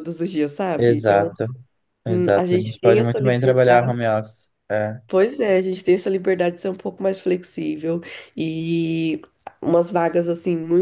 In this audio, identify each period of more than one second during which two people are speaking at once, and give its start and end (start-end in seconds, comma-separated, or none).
2.4-4.0